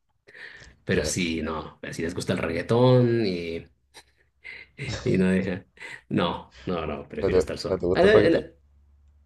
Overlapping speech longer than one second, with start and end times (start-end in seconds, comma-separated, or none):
7.2-8.5